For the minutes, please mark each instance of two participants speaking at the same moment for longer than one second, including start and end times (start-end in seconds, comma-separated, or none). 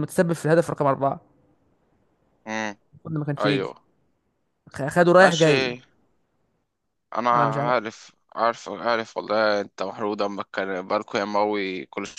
none